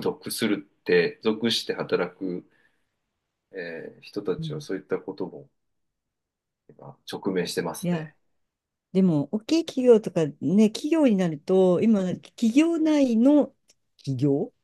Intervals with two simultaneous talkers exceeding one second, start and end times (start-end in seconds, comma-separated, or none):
none